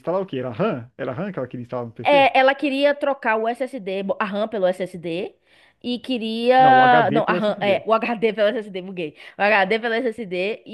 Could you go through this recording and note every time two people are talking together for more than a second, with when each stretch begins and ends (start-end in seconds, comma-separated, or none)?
6.6-7.8